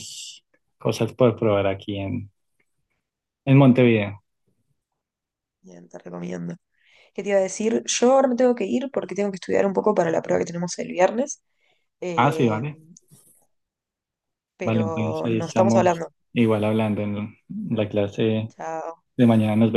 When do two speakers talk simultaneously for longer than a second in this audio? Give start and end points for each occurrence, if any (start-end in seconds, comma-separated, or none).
14.6-16.1